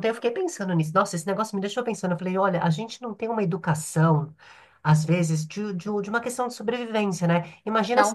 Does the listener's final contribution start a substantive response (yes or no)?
no